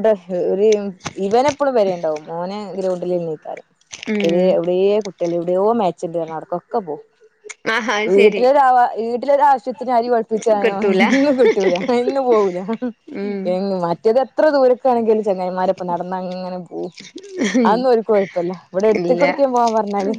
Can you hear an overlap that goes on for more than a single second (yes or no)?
no